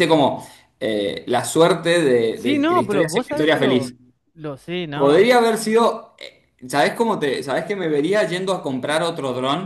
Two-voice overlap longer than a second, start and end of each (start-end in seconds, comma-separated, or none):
2.3-3.9